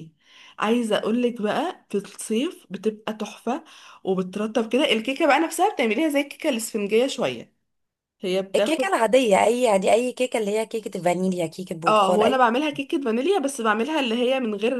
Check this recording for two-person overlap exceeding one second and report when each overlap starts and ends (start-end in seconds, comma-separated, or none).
none